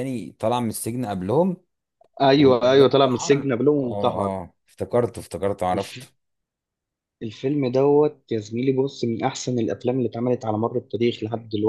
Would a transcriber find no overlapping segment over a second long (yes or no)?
no